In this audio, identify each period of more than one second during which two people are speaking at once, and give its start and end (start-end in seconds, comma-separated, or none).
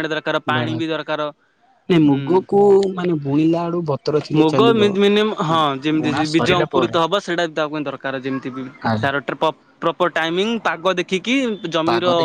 none